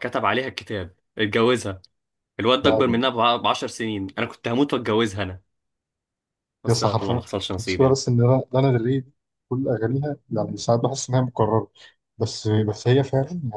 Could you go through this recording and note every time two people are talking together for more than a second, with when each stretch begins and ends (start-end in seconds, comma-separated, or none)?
6.7-8.0